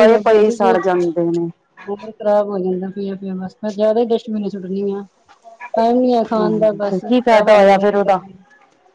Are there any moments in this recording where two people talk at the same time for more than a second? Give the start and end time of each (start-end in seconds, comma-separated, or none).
6.4-8.1